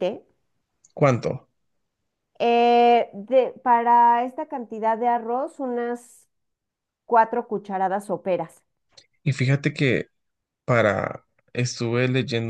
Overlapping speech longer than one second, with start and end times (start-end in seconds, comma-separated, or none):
none